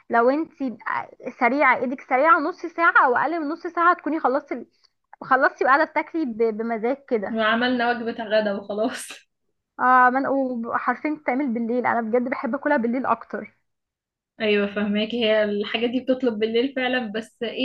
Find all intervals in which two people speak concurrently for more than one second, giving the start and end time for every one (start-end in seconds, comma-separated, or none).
none